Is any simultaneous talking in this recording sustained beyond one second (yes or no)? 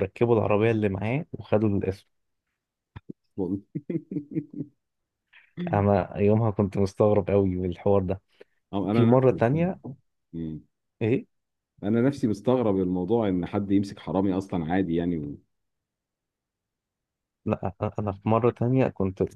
no